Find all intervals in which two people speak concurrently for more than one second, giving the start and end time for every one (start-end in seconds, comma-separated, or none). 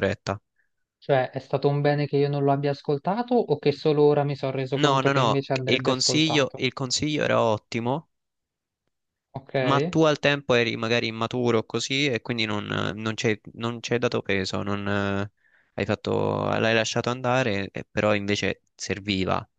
4.7-6.6